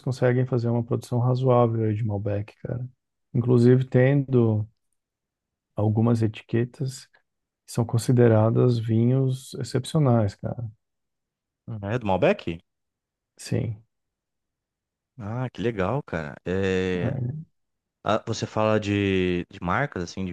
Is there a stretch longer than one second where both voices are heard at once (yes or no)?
no